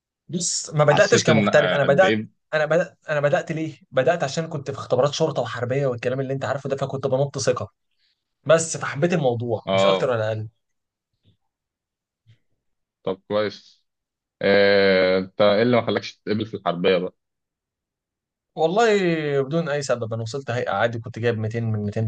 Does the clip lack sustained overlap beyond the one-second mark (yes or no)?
no